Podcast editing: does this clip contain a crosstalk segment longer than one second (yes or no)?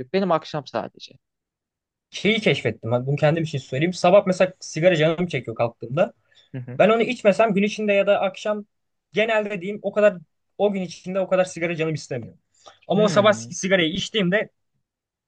no